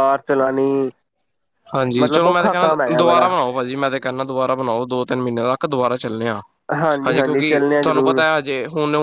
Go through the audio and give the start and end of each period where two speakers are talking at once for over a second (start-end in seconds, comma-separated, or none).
2.0-3.3